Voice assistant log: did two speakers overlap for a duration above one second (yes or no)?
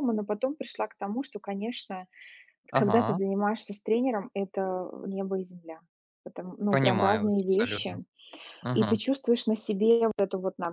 yes